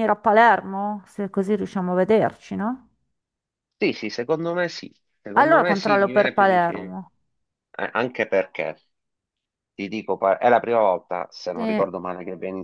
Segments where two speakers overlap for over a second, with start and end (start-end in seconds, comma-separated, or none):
5.3-6.9